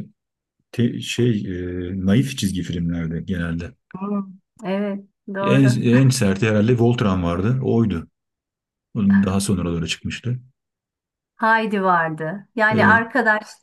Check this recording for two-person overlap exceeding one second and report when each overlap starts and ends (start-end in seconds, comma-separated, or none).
none